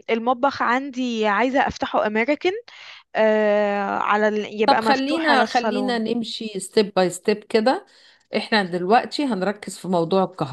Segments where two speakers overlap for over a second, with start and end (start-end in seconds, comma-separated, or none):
4.7-6.0